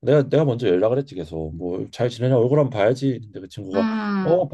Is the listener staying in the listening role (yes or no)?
yes